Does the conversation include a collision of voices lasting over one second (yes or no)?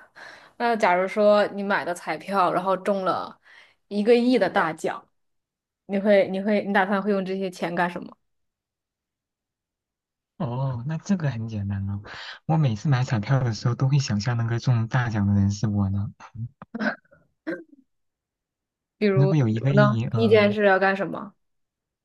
yes